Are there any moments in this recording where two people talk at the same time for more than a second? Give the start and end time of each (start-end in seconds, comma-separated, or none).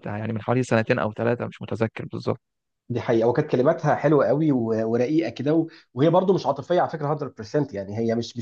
none